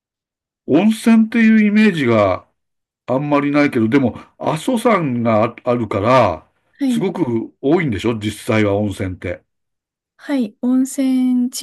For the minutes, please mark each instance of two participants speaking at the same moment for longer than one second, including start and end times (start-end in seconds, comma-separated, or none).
none